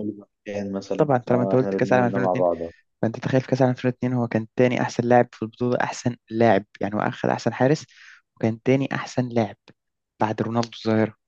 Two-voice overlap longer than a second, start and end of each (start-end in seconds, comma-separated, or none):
1.0-2.4